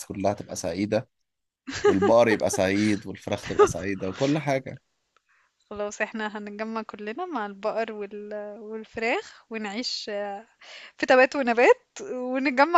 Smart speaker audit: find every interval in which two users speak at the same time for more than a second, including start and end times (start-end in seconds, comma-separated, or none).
none